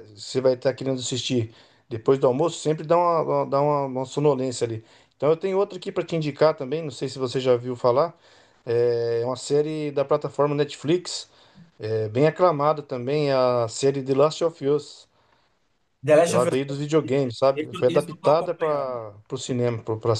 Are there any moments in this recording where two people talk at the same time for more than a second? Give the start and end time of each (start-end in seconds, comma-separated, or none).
16.2-19.0